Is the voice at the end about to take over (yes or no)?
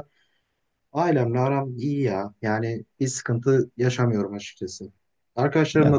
no